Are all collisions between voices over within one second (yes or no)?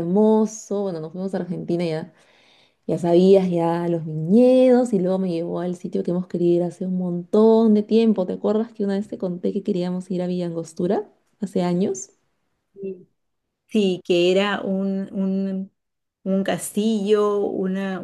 yes